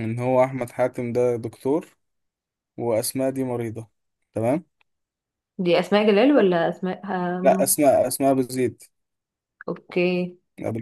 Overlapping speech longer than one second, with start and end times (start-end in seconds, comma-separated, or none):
none